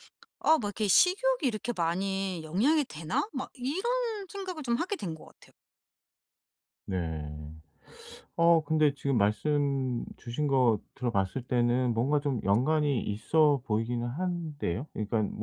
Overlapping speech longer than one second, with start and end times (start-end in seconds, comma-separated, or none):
none